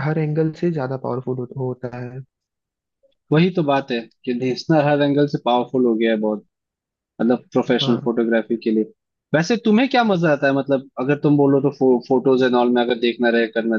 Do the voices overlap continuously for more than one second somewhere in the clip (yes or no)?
no